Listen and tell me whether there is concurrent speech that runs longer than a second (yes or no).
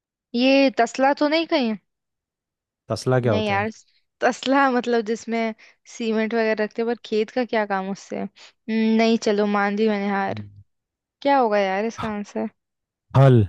no